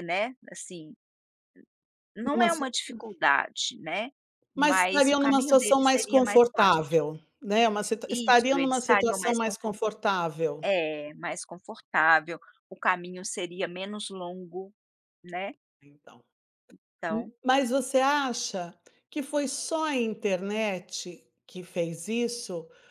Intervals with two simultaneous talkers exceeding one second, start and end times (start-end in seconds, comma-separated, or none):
4.5-6.8, 8.1-9.8